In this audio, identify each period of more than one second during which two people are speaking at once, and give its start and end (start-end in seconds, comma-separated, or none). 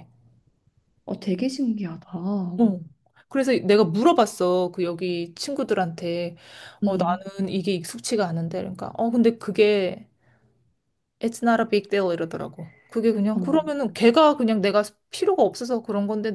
none